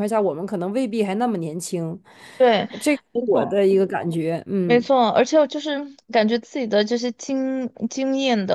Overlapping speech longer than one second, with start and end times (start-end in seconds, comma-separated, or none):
none